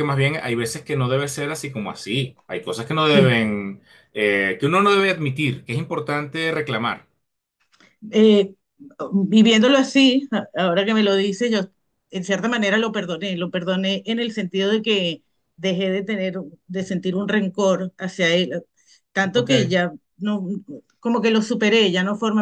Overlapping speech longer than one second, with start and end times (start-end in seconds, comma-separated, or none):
none